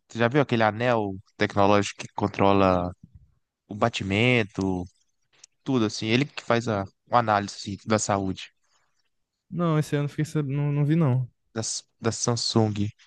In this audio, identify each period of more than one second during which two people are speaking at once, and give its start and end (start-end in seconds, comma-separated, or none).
none